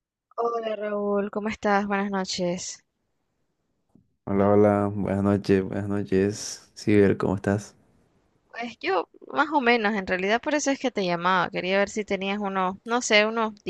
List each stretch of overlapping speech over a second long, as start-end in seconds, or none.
none